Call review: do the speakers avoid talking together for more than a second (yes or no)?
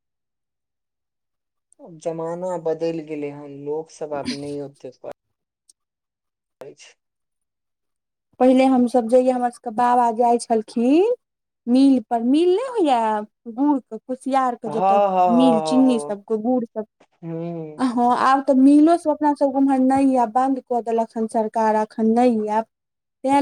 yes